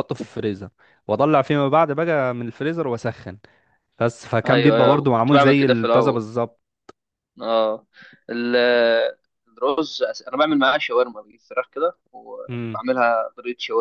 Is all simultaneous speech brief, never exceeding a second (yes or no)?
no